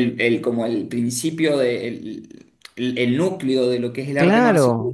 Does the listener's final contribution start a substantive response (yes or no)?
yes